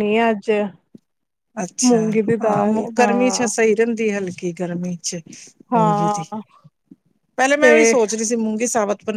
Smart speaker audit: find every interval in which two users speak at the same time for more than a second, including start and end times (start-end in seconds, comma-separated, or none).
1.9-3.5